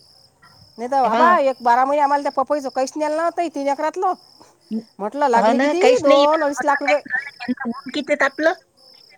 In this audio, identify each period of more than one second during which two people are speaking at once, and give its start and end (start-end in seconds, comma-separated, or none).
5.4-7.0